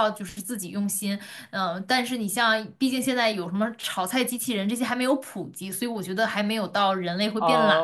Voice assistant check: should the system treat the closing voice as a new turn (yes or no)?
yes